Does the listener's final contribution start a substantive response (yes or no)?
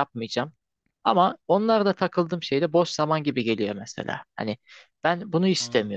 no